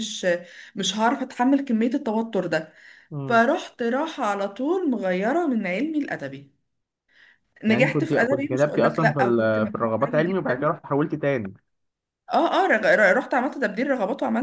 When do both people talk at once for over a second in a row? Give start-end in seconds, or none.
7.7-10.7